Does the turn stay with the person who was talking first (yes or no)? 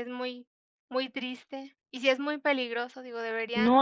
no